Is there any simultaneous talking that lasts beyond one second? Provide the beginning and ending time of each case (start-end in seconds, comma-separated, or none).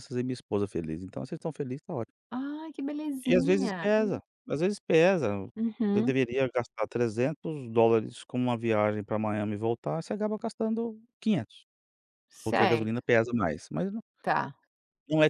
none